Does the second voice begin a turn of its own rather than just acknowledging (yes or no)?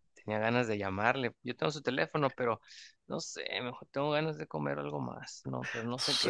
yes